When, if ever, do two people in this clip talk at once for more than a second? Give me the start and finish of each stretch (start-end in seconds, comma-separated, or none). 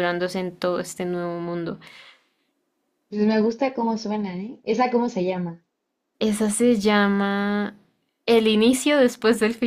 none